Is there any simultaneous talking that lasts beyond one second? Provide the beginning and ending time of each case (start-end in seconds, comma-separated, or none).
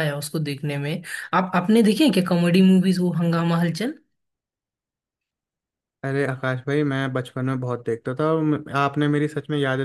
none